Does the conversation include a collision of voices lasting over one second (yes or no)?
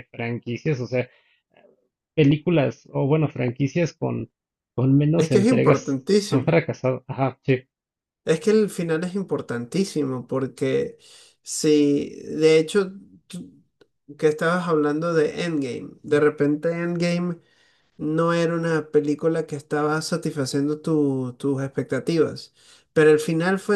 yes